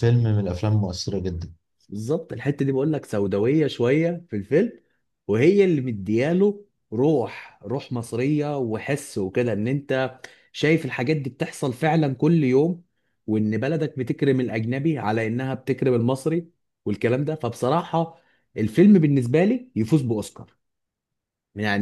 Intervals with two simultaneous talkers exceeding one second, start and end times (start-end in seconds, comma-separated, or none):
none